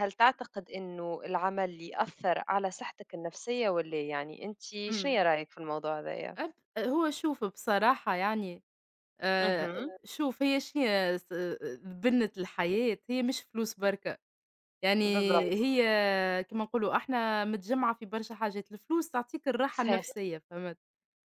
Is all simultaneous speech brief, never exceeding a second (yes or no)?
yes